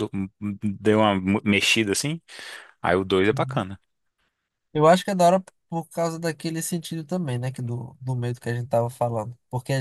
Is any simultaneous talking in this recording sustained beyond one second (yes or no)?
no